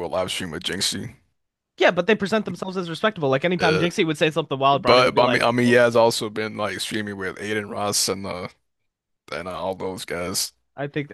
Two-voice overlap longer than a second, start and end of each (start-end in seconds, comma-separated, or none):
4.7-6.1